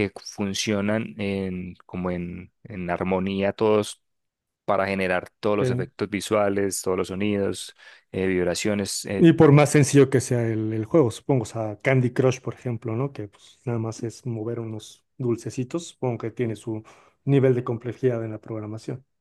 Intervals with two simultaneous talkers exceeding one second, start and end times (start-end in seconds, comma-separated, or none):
none